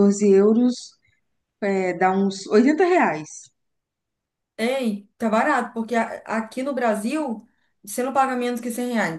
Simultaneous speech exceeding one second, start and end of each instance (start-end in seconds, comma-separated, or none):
none